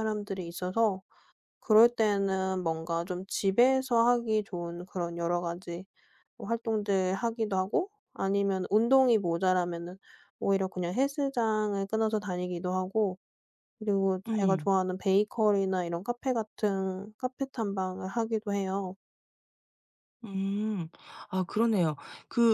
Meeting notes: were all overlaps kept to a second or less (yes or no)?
yes